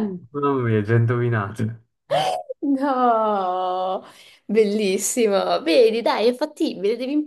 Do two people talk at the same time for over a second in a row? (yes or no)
no